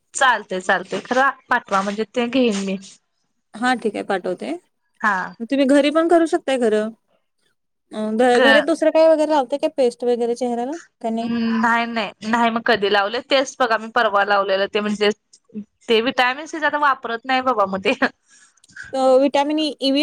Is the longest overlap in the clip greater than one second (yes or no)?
no